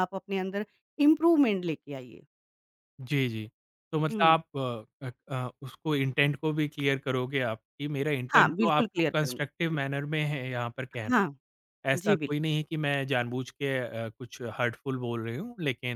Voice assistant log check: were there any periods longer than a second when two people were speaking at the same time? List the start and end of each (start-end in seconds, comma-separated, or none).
8.3-9.8